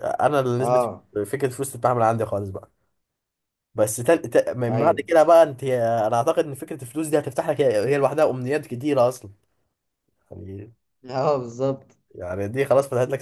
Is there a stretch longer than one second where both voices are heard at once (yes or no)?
no